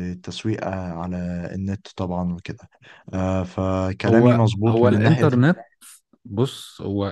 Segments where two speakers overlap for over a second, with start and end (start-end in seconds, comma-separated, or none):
4.1-5.5